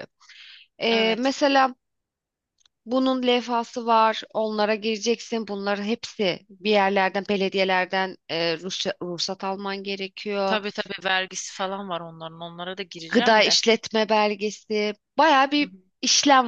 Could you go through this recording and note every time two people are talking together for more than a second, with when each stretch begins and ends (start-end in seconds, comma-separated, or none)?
none